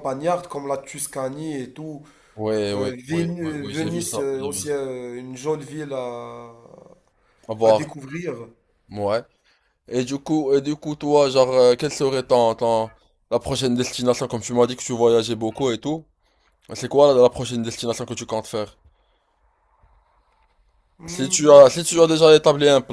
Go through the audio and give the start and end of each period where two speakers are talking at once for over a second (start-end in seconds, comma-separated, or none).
2.7-4.8